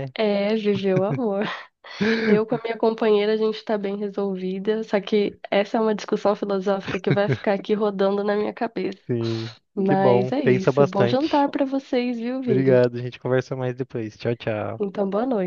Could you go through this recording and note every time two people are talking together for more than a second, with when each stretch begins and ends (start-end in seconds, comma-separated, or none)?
9.8-11.5